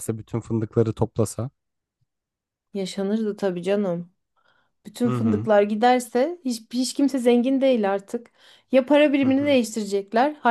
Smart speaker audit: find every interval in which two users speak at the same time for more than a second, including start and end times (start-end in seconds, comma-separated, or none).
none